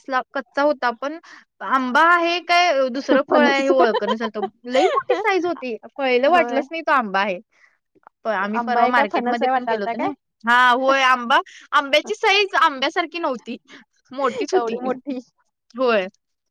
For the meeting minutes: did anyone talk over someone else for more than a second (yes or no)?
yes